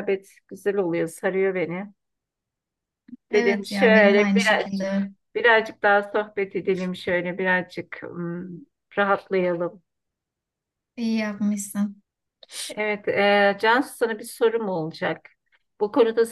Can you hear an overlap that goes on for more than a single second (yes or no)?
yes